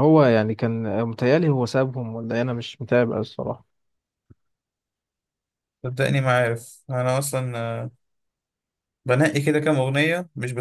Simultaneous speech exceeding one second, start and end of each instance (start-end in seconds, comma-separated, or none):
none